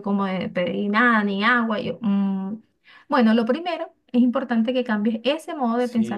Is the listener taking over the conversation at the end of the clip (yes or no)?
yes